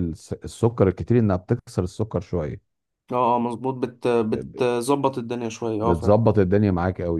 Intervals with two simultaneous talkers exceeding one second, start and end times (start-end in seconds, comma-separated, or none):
none